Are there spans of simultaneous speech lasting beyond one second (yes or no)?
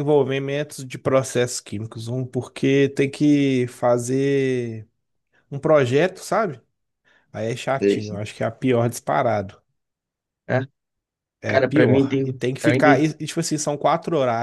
yes